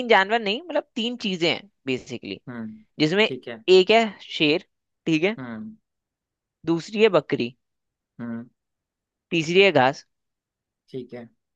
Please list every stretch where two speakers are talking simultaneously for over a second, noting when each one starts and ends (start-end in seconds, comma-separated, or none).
none